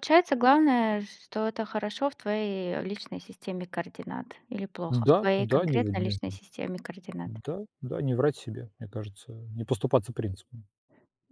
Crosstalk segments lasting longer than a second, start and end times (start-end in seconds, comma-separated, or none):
4.9-6.2